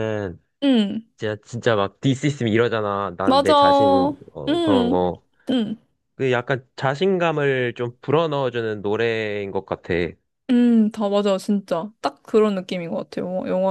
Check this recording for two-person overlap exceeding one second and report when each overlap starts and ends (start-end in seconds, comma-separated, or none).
3.3-5.0